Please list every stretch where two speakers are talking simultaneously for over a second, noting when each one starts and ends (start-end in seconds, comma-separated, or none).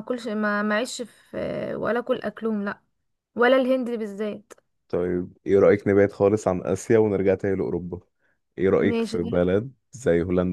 none